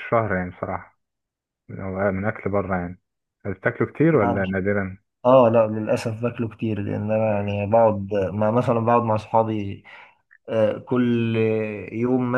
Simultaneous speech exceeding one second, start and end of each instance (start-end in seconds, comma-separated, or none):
none